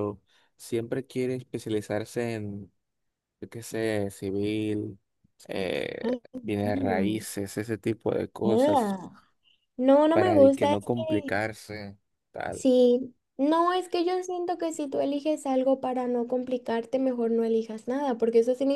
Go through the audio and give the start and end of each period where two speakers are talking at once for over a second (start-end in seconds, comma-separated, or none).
10.1-11.4